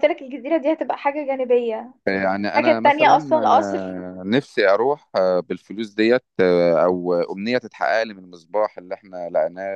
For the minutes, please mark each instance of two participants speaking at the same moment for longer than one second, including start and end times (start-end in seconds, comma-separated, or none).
2.5-4.0